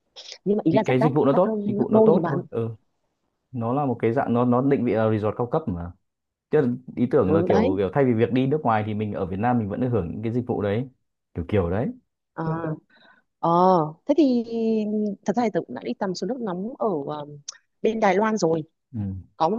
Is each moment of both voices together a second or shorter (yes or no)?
no